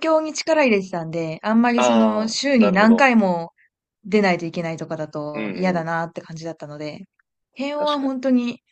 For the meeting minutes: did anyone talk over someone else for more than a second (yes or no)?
yes